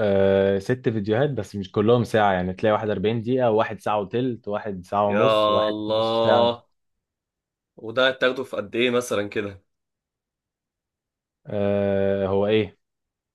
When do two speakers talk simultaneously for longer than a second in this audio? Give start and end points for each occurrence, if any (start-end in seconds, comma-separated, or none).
5.1-6.5